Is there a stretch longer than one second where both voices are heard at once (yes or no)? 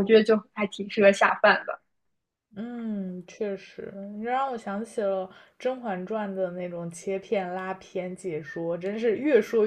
no